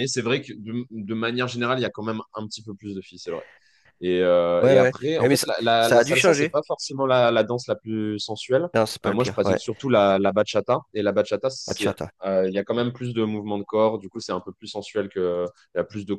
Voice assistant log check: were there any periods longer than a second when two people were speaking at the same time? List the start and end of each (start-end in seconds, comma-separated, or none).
4.6-6.6